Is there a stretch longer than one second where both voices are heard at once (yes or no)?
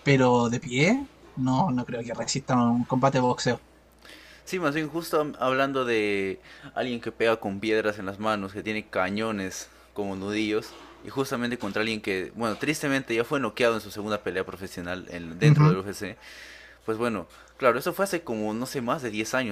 no